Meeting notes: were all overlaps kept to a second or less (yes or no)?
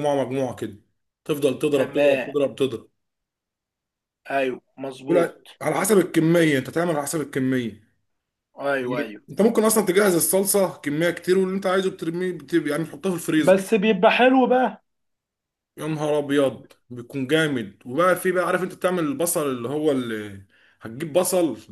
yes